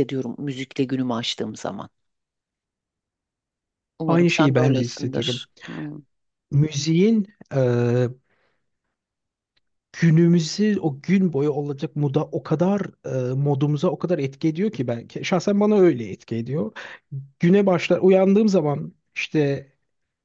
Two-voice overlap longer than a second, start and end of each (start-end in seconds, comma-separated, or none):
4.1-5.4